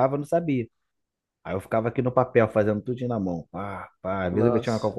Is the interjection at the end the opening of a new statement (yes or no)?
no